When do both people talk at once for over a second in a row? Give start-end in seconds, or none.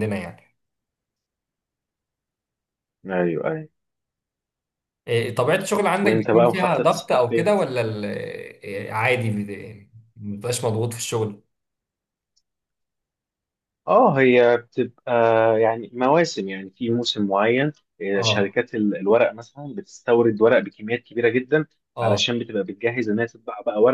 6.0-7.5